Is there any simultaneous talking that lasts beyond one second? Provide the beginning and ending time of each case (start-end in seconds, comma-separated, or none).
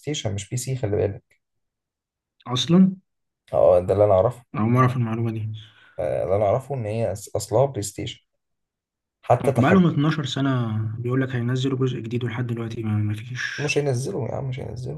none